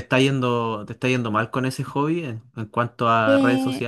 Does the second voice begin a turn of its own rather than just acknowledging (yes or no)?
yes